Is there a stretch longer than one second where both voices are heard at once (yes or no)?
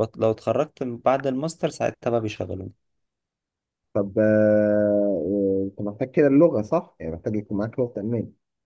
no